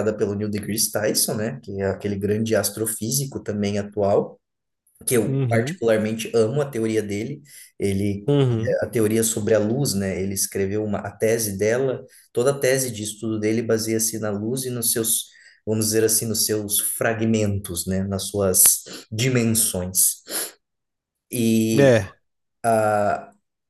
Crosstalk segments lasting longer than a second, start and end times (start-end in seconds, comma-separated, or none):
none